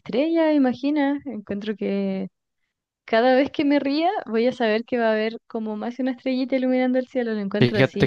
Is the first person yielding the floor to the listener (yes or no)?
yes